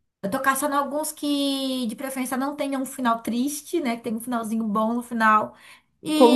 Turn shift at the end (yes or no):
no